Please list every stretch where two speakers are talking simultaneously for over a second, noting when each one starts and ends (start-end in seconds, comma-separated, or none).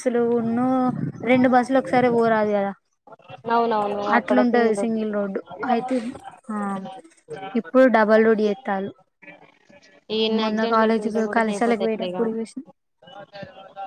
10.8-12.2